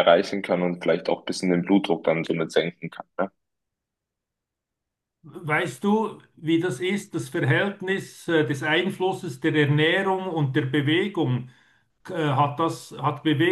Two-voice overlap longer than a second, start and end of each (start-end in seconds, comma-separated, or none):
none